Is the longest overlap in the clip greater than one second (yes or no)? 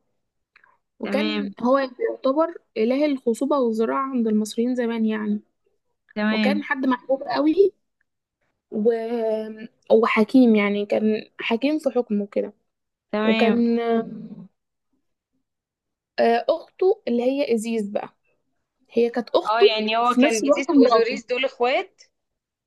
yes